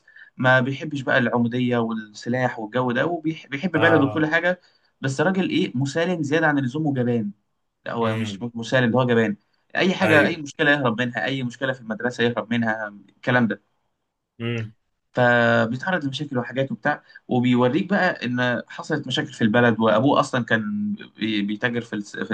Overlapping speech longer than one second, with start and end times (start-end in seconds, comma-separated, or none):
none